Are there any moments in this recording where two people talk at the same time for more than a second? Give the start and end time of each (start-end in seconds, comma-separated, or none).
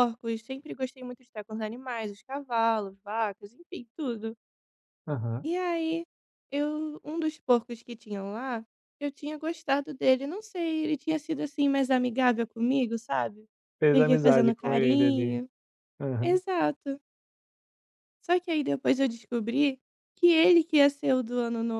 13.9-15.4